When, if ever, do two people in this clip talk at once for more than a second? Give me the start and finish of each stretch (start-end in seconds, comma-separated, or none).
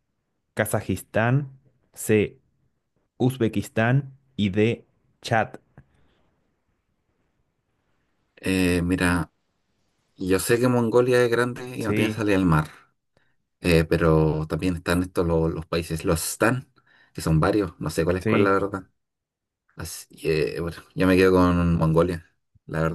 none